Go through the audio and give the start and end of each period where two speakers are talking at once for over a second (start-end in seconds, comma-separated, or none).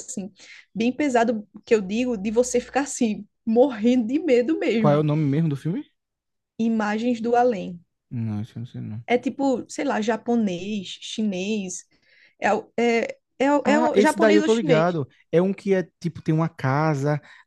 13.6-14.9